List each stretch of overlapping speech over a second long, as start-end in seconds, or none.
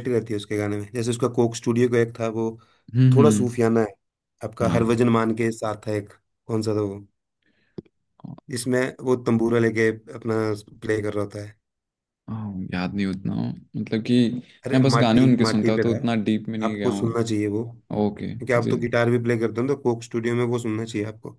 14.7-17.2